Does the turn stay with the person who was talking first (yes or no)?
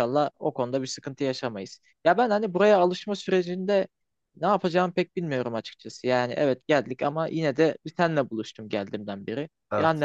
yes